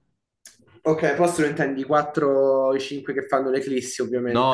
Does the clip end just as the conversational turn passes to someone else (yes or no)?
yes